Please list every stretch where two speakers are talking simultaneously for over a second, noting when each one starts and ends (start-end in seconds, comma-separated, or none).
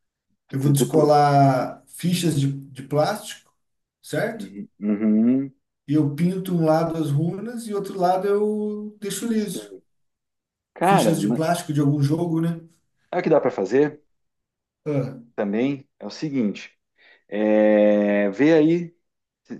none